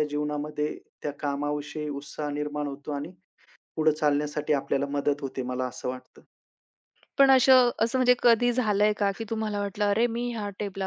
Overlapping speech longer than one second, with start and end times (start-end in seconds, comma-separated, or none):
none